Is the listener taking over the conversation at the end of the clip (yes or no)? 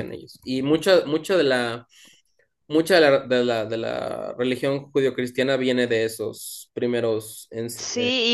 yes